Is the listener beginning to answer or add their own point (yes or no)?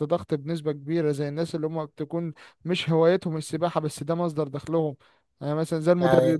no